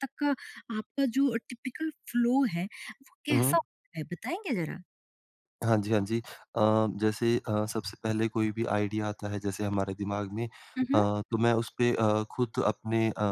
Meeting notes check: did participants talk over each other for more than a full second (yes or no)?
no